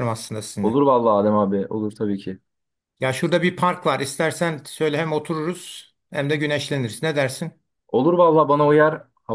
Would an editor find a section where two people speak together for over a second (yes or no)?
no